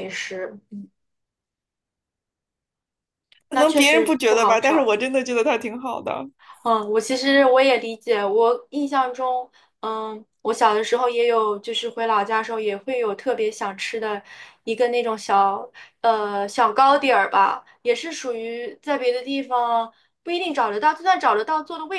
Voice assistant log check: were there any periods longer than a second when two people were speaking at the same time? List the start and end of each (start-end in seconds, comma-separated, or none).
3.5-4.9